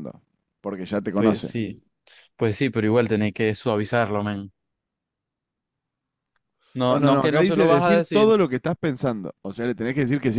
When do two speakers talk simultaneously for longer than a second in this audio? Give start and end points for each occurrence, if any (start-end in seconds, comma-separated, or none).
6.9-8.3